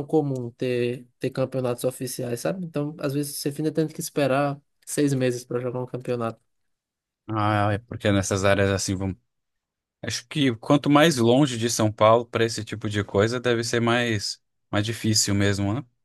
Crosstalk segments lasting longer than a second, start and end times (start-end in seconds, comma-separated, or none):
none